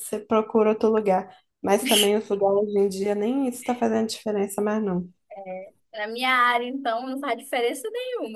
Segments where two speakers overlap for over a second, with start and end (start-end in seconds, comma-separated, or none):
none